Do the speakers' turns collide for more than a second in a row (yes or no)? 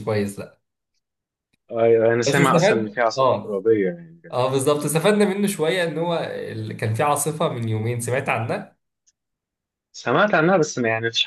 yes